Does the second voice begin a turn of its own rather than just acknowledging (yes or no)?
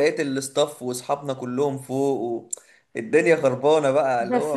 yes